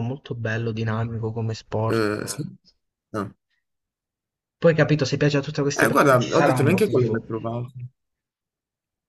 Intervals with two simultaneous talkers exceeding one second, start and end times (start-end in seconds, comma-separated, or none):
5.8-7.2